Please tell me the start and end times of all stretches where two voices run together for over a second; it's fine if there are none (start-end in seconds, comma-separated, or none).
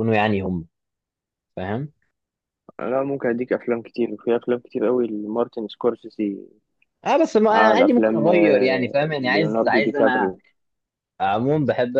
7.5-10.3